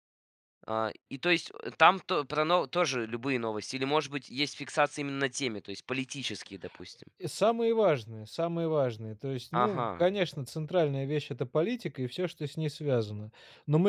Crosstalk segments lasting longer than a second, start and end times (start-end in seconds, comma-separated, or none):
none